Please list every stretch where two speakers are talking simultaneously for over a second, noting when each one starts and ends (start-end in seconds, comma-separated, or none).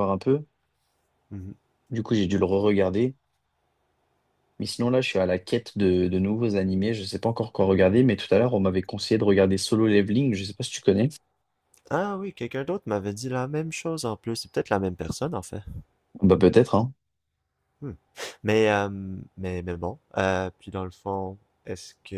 none